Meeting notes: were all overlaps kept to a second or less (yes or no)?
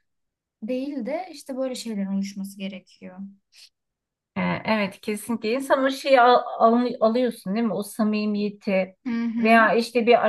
yes